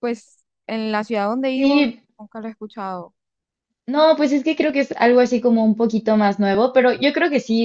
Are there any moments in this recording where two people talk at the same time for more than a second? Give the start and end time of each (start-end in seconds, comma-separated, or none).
none